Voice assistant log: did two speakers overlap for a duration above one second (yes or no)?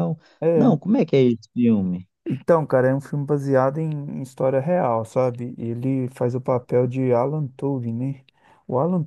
no